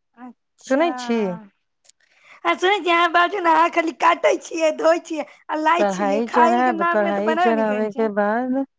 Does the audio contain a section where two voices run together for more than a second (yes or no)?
yes